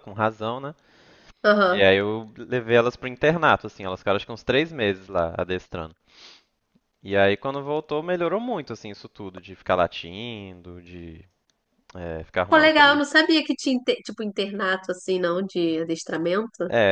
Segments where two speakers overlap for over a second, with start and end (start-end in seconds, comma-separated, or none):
none